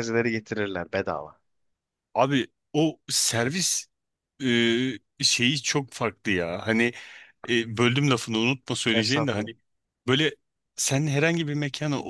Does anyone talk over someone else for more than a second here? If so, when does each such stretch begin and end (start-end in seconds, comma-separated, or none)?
none